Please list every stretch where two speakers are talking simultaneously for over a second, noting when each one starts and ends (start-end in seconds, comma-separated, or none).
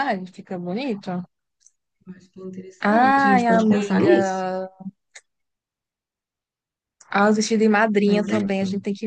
2.8-4.4